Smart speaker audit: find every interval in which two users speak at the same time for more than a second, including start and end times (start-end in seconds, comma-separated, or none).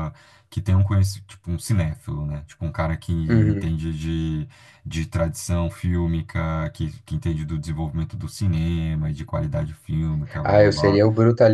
none